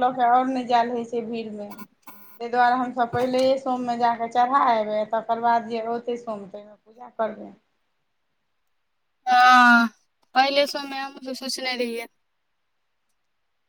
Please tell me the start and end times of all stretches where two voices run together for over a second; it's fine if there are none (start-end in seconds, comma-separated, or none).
none